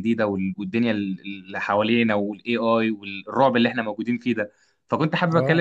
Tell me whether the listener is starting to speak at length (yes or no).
no